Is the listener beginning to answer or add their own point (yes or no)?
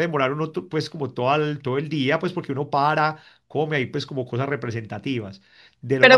yes